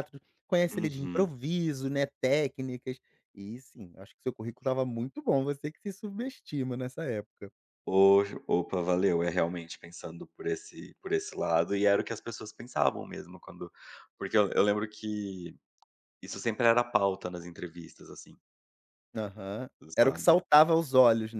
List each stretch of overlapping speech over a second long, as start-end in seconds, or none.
none